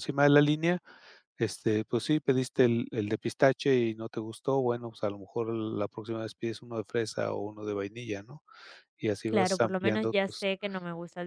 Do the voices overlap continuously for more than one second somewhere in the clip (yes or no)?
yes